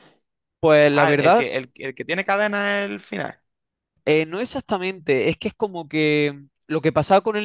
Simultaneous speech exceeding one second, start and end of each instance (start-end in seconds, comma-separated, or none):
none